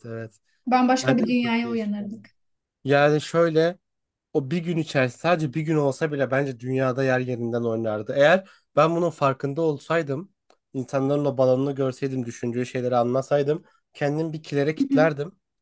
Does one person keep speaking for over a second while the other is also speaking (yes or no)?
yes